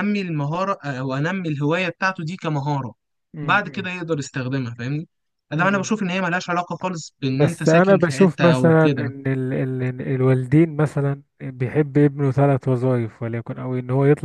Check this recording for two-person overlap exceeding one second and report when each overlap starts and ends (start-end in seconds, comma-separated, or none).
7.3-9.1